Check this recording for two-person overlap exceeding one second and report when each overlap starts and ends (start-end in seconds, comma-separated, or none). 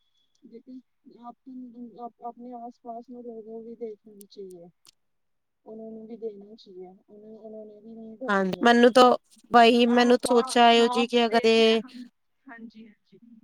9.9-11.8